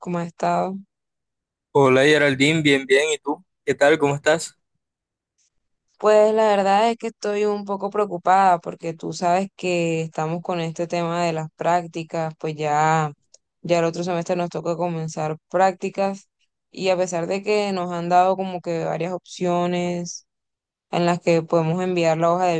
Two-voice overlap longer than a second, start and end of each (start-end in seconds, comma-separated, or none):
none